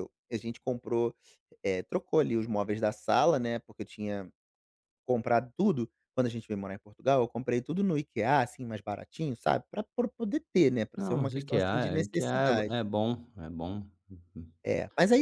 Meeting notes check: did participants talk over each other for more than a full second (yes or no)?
yes